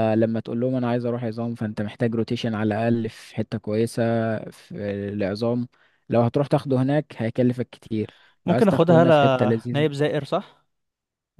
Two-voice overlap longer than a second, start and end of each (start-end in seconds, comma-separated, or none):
8.5-9.9